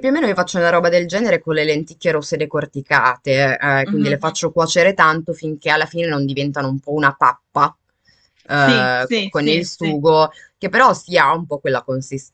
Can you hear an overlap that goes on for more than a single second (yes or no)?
yes